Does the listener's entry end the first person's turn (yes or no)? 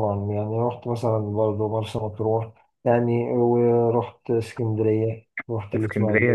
yes